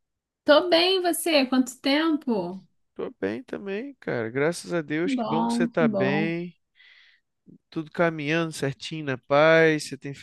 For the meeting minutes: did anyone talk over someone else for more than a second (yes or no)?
yes